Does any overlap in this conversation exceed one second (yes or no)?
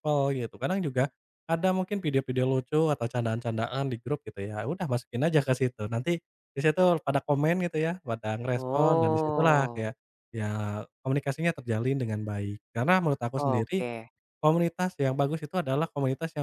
yes